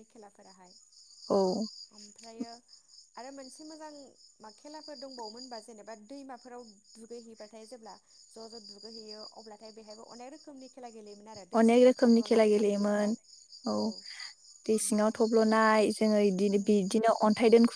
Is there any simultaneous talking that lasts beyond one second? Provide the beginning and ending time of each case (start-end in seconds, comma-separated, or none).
11.6-13.1